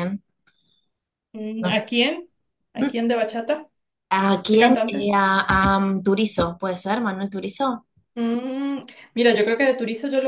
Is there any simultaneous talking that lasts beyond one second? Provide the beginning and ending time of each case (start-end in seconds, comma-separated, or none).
none